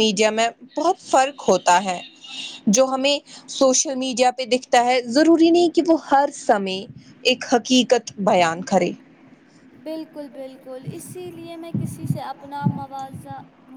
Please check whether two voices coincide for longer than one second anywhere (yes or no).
no